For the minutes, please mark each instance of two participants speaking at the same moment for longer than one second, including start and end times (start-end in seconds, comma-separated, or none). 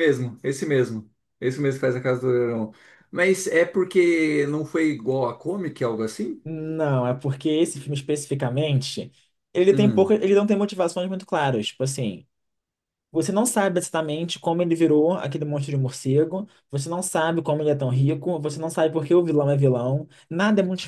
none